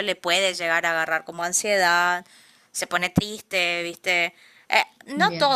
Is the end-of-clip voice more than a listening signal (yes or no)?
no